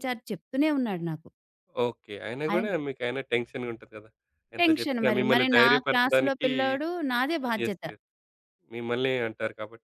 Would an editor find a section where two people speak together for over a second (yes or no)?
yes